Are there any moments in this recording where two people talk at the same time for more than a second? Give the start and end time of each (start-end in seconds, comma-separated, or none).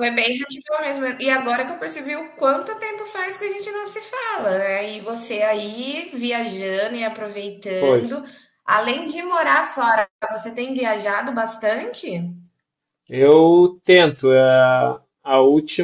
none